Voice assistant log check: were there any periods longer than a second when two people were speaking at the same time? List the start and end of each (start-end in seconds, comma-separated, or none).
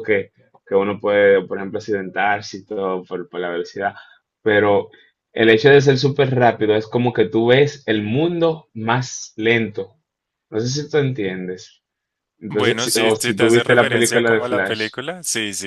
12.5-14.9